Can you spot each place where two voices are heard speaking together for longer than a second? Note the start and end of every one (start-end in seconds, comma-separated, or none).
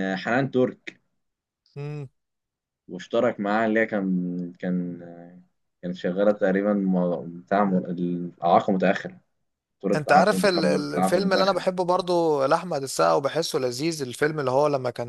9.9-11.7